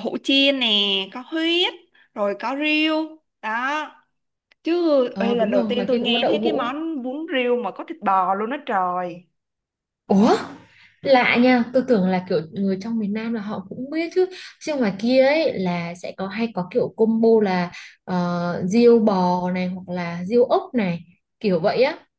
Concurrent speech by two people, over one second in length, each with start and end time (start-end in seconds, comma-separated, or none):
5.1-6.7